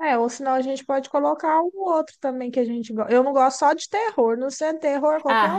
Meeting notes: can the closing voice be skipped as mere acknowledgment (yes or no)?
no